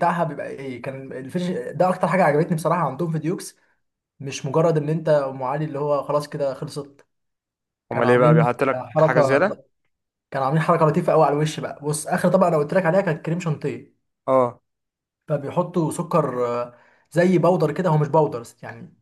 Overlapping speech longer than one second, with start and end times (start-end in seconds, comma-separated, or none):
7.9-9.5